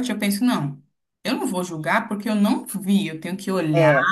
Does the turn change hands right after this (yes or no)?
no